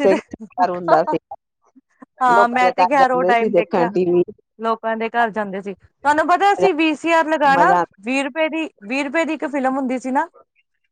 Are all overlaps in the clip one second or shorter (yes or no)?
no